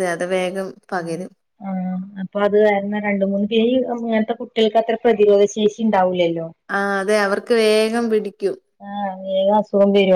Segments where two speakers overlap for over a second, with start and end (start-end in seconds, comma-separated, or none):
none